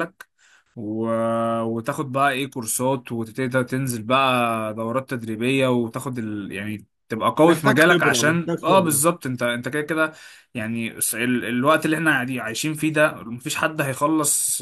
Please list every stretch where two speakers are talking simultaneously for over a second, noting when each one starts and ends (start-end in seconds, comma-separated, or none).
7.4-9.0